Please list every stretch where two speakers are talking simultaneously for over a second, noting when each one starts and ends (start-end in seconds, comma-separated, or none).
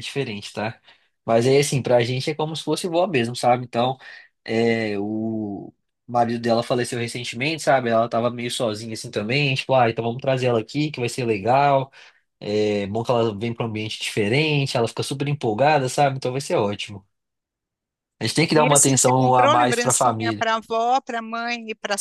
18.6-20.4